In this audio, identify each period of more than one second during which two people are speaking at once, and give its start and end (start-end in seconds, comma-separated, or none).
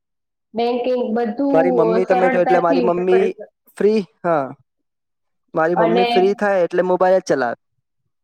1.5-3.2